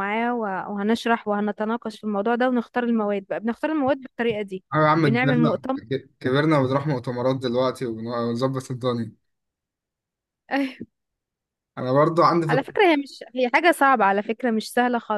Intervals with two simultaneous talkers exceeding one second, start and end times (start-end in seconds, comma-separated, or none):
none